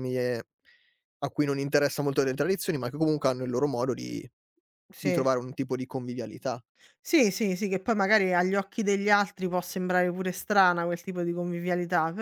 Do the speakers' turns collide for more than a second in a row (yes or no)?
no